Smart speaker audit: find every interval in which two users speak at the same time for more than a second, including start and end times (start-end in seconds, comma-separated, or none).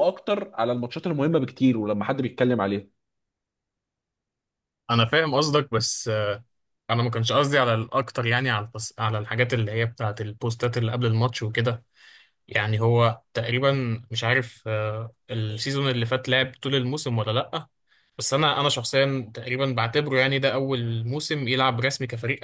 none